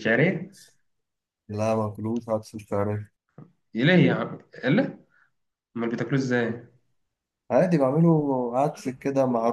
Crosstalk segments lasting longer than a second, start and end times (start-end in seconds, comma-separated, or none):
none